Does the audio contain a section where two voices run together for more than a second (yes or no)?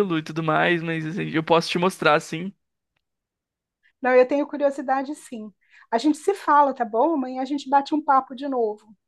no